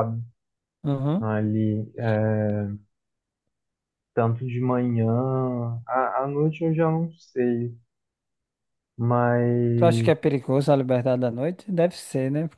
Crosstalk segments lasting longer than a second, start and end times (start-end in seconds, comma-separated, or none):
none